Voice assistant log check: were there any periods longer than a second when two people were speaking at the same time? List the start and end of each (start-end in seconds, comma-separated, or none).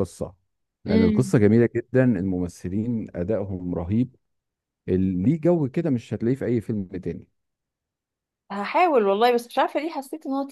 none